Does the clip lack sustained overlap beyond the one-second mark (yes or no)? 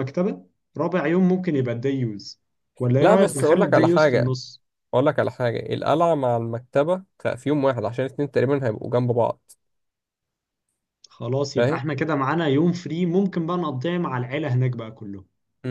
no